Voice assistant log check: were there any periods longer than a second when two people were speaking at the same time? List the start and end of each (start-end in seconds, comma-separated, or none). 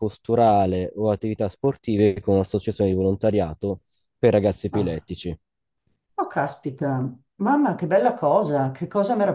none